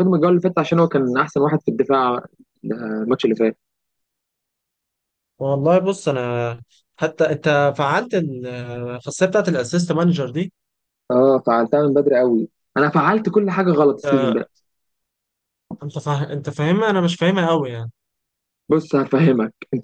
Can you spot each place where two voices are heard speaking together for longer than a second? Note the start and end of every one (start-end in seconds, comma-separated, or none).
none